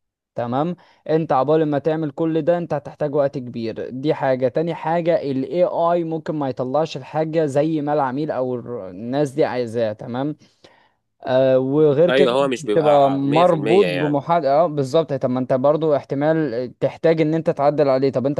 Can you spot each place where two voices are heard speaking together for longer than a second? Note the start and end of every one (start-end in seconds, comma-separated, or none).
12.1-14.2